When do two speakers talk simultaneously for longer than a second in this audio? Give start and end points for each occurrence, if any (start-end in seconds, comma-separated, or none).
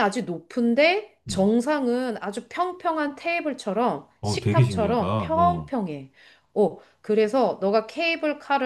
4.2-5.7